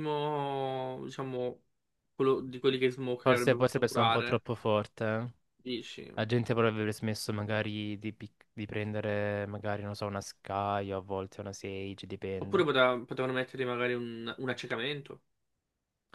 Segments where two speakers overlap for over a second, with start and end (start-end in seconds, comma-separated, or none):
3.2-4.4